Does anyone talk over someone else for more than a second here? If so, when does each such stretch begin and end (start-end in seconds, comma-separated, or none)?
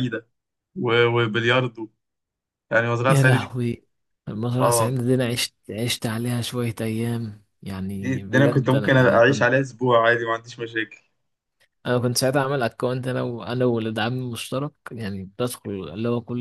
8.0-9.5